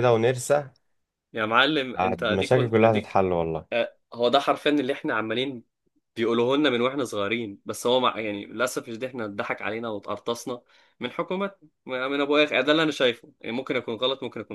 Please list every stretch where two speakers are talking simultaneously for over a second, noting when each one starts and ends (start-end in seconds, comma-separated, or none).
2.0-3.2